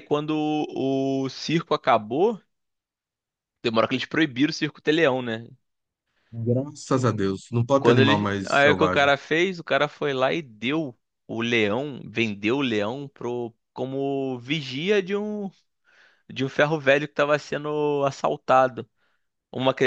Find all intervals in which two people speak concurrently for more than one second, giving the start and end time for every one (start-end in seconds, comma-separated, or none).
7.8-9.1